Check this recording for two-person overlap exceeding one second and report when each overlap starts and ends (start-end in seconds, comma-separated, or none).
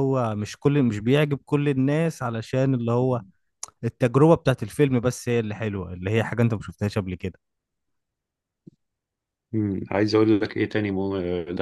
none